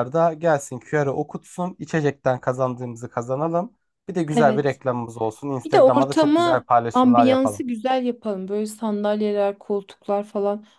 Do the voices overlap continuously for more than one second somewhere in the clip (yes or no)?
yes